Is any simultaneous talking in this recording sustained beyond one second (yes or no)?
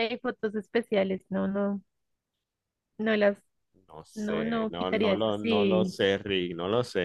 yes